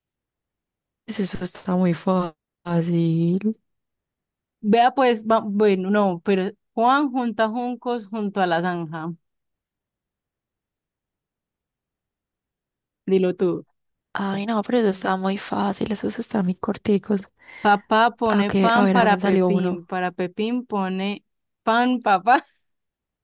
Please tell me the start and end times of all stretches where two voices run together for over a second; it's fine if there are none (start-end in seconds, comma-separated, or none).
18.3-19.8